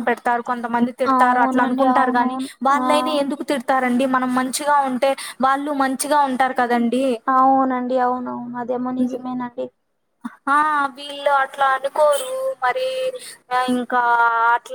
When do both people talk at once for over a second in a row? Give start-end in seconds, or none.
1.2-2.9